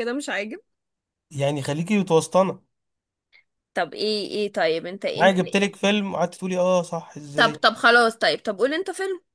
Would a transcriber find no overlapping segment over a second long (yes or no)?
yes